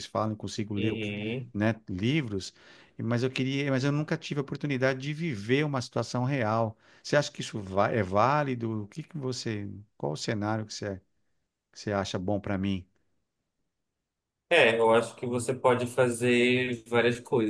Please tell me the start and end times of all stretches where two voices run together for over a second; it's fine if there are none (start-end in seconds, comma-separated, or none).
none